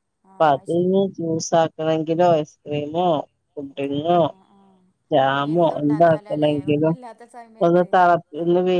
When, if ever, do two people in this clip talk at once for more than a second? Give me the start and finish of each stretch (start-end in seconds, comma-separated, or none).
5.5-7.0